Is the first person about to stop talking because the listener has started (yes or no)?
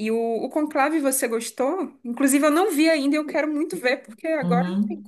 yes